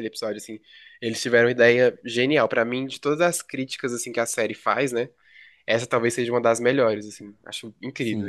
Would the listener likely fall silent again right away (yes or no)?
no